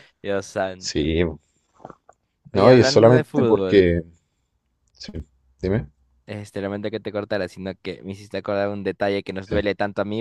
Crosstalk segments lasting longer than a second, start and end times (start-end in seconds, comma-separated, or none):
2.5-3.9